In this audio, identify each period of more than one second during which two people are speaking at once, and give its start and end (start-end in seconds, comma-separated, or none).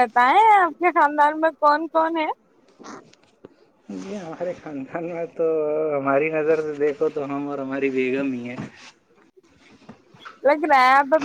none